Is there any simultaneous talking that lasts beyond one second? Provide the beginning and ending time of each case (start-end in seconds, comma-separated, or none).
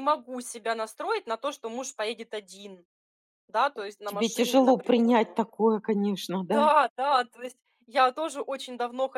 4.0-5.4